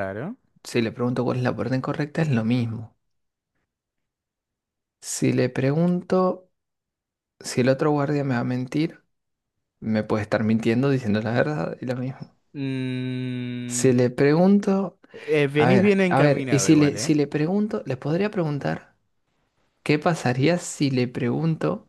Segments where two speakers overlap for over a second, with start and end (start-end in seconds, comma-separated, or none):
15.6-17.2